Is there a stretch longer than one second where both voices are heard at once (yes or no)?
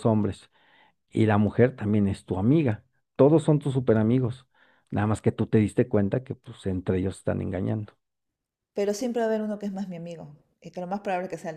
no